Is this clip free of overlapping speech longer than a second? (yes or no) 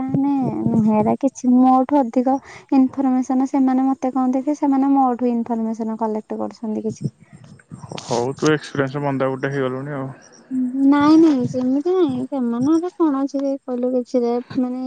yes